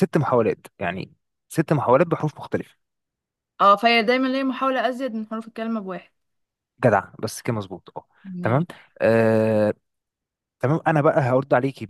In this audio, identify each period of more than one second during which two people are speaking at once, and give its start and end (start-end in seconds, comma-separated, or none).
none